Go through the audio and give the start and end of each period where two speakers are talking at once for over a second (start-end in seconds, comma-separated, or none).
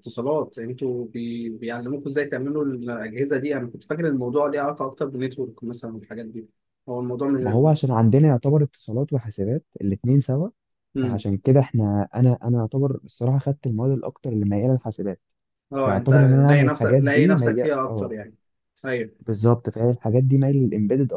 15.8-18.1